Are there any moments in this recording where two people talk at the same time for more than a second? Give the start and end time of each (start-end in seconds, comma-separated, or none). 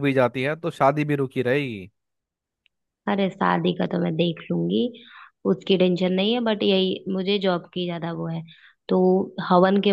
none